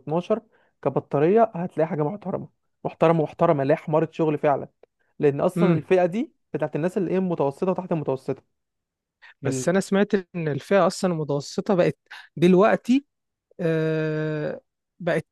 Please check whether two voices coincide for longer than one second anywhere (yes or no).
no